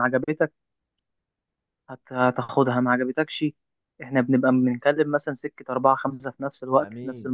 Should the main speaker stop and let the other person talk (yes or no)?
yes